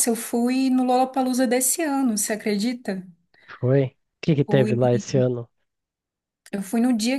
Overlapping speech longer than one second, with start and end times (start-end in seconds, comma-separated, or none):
none